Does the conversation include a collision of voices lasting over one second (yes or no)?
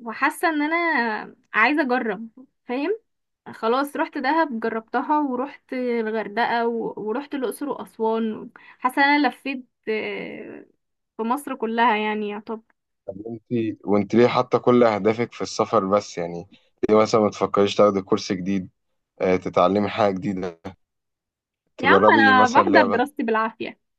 yes